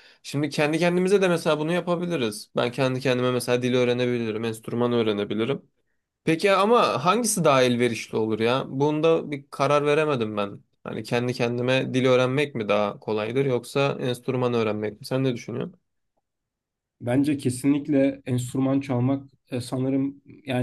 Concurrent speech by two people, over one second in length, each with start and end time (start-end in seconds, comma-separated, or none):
none